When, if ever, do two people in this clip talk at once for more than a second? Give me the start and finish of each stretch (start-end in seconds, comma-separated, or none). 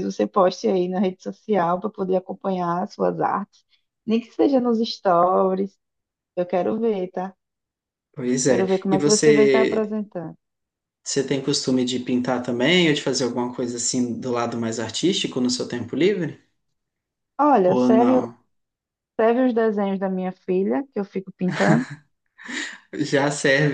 8.5-9.9